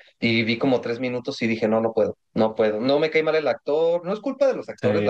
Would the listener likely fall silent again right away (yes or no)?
yes